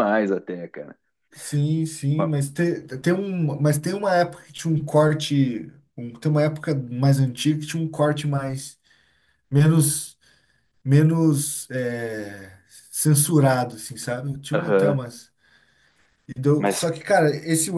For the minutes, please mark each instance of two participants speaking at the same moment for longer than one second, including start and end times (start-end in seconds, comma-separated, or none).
none